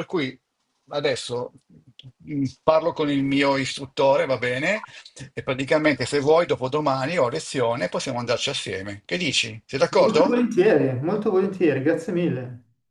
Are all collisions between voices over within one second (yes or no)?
yes